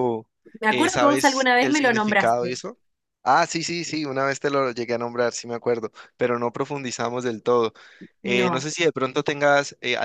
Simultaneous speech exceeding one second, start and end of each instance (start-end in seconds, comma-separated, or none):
0.7-2.6